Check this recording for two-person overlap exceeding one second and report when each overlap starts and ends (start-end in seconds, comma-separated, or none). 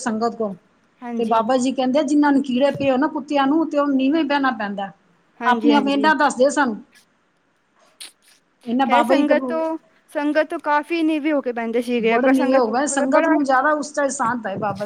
12.1-13.3